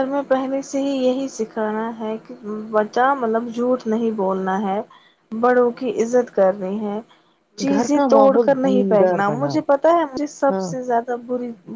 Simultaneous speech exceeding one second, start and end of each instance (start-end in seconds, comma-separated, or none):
7.7-9.6